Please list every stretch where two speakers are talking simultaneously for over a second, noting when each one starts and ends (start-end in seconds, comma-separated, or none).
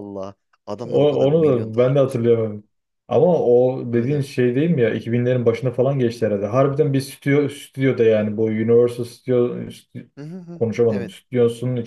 0.8-2.4